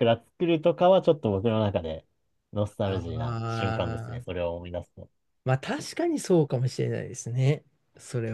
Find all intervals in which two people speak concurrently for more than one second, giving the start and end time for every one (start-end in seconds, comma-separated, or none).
2.8-4.4